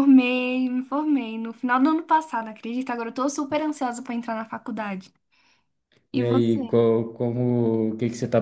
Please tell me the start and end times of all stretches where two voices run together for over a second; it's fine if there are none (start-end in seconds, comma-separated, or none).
none